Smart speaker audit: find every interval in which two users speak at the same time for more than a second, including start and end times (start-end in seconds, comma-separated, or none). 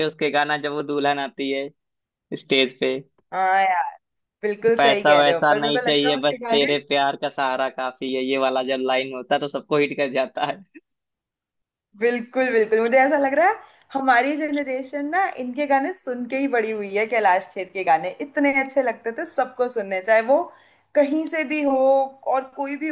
4.8-6.8